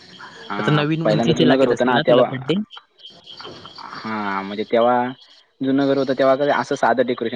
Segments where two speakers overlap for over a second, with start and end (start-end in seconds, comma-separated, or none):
0.5-2.3